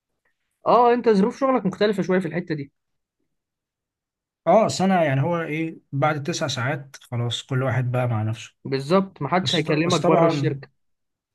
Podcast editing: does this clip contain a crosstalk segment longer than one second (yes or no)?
yes